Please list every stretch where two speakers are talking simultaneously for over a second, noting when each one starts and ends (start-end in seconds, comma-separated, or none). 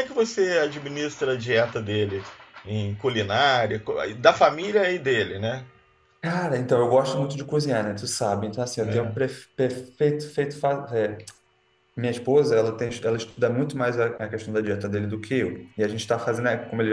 none